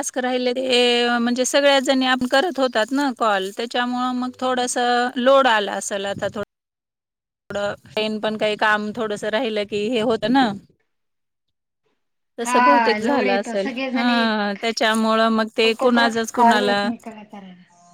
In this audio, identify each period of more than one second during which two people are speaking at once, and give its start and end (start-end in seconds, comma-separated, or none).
12.4-14.1